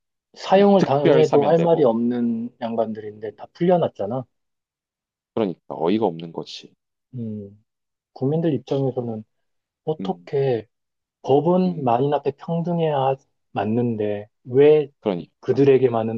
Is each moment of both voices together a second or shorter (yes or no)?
no